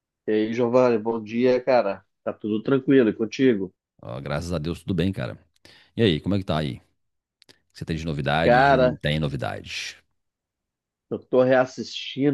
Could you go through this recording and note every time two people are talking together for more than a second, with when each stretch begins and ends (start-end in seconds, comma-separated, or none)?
none